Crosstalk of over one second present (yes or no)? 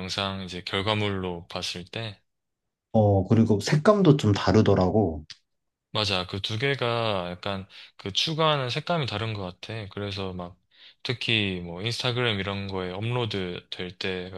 no